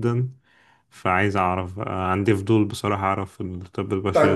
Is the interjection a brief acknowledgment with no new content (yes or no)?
no